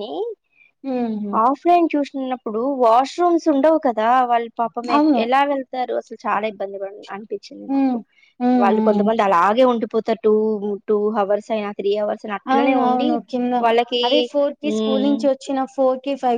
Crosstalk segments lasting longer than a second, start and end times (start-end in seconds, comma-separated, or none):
none